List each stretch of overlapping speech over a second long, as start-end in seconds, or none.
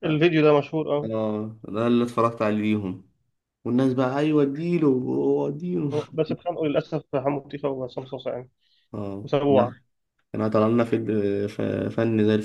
none